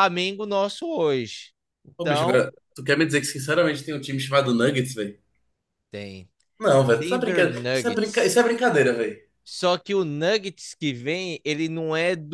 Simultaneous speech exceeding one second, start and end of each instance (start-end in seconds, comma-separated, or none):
6.8-8.4